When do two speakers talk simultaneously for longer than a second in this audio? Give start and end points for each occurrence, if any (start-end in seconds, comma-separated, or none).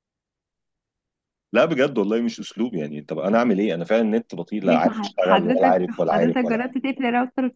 4.7-6.7